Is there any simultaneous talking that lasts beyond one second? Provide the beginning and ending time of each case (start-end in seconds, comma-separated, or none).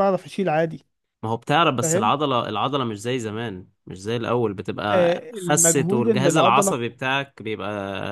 4.9-6.8